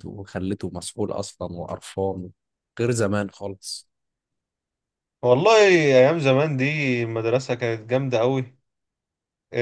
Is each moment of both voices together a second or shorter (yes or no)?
yes